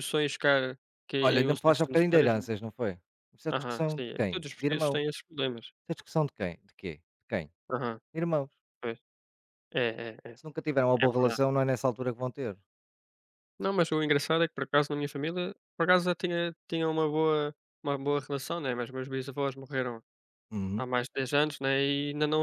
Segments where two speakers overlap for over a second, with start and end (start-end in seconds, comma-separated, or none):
1.2-2.4, 3.5-5.0